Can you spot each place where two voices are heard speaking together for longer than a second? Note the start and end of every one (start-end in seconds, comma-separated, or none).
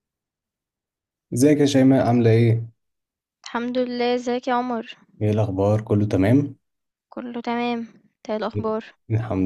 none